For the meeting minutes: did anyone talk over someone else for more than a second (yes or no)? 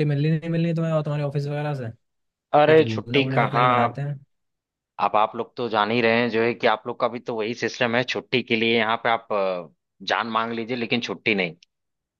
yes